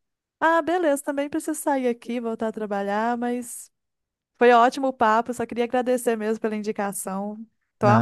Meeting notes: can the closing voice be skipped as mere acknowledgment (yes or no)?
no